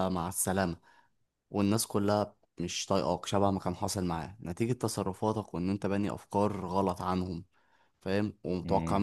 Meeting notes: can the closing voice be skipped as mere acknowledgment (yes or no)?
yes